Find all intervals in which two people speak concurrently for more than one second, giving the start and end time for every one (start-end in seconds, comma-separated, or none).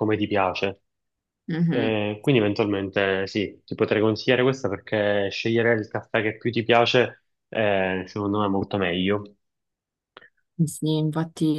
none